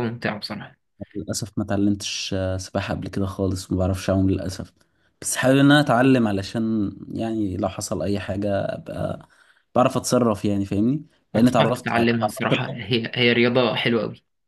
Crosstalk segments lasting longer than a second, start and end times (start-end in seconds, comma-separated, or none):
11.4-12.7